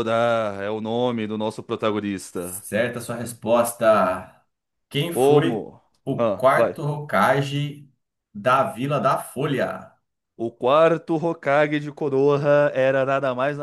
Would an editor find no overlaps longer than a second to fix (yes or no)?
no